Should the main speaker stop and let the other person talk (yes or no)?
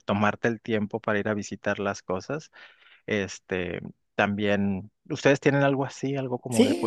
yes